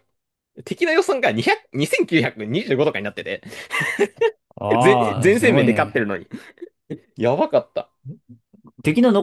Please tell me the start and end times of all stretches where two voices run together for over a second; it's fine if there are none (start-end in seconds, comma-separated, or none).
4.8-6.1